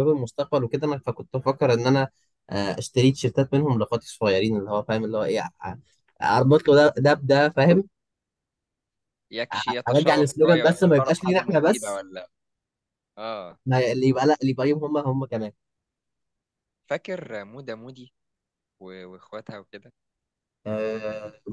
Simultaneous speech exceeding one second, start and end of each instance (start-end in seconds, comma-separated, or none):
9.5-12.0